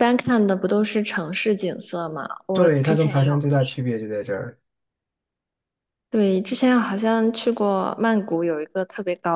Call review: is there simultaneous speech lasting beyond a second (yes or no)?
yes